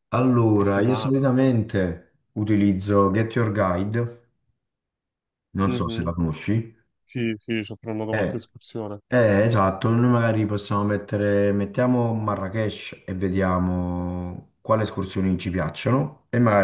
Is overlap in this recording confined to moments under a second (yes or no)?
yes